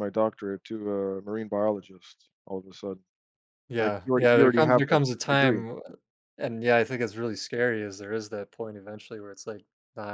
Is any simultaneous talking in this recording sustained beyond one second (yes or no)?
yes